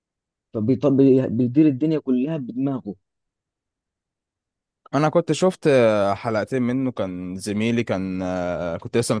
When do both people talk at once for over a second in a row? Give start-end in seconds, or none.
none